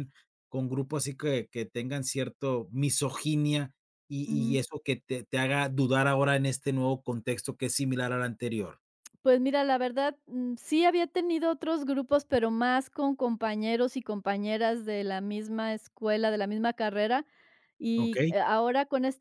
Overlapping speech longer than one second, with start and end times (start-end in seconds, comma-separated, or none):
none